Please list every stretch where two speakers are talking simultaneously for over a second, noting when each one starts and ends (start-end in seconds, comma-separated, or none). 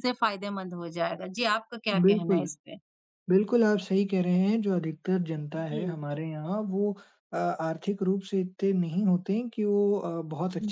none